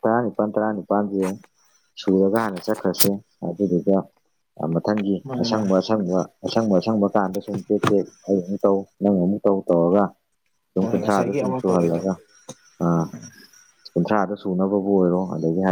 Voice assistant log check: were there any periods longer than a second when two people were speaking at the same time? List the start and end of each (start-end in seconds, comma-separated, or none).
10.8-12.0